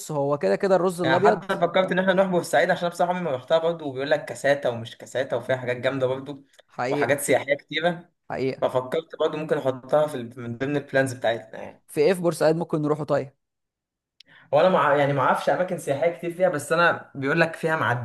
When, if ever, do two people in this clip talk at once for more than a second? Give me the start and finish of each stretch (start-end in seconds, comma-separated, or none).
none